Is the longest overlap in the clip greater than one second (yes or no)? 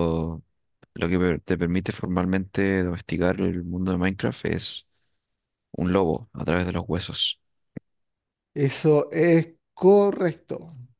no